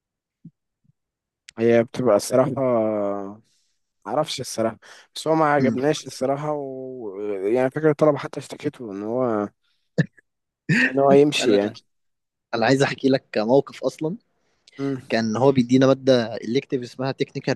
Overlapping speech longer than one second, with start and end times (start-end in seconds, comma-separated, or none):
none